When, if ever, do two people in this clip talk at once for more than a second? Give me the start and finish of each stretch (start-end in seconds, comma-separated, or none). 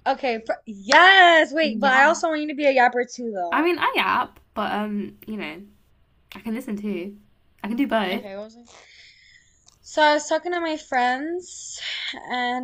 none